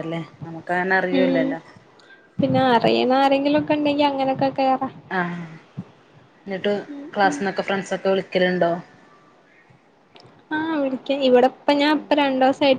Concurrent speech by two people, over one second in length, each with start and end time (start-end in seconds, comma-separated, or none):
none